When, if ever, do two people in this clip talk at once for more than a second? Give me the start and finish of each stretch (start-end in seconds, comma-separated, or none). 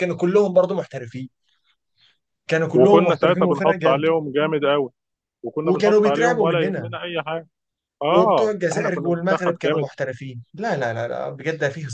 2.8-4.1, 5.7-6.9, 8.1-9.9